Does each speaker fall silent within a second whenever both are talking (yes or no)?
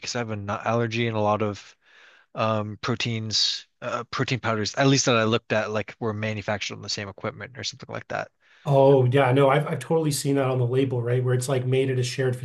yes